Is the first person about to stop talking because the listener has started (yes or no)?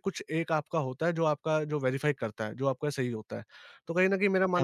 yes